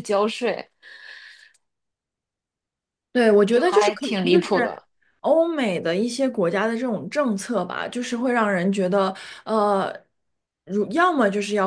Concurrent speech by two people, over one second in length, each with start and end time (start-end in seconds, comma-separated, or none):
3.5-4.7